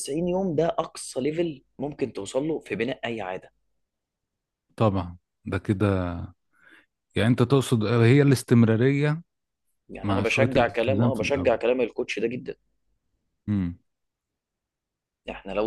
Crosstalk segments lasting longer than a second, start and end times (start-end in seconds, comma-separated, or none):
10.0-11.6